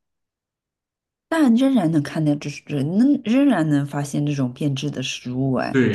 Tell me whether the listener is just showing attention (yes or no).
no